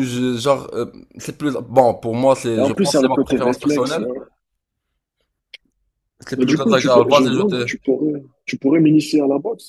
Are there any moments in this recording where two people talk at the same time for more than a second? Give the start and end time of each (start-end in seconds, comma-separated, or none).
2.6-4.1, 6.3-7.7